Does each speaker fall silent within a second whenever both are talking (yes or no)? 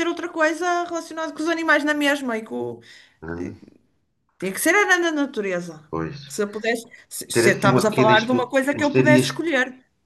no